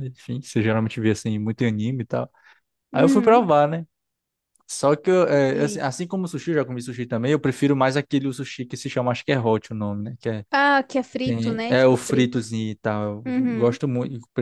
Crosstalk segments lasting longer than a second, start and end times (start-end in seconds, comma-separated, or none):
11.2-12.5